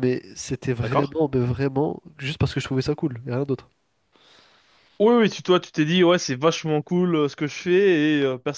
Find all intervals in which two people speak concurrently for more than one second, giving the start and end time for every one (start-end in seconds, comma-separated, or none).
none